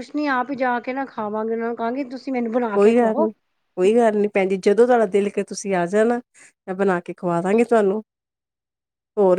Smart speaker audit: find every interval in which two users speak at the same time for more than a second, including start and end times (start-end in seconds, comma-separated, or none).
none